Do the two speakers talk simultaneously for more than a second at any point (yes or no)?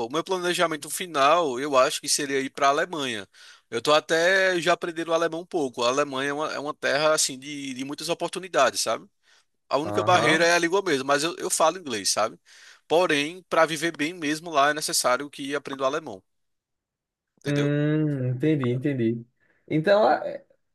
no